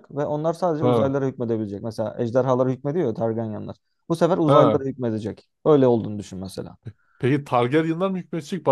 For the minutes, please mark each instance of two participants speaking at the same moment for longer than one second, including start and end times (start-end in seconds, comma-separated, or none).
none